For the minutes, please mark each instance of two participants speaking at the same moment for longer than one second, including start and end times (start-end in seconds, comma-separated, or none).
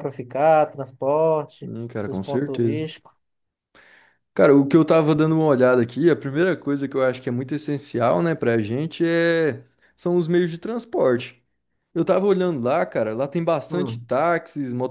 1.5-2.9